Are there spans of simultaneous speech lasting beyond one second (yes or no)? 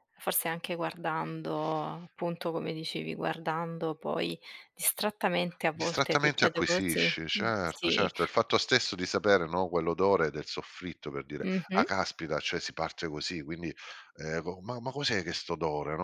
yes